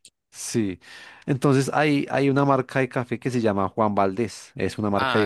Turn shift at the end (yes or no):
yes